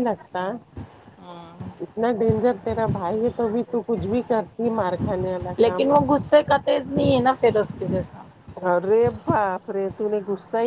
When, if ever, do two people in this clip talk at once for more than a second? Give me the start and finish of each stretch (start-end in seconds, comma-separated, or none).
none